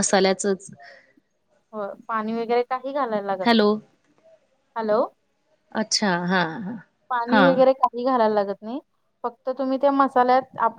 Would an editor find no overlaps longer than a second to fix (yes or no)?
yes